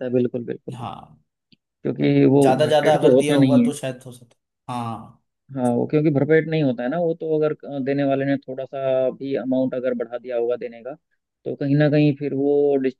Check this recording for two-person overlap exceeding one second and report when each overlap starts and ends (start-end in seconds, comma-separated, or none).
2.4-3.7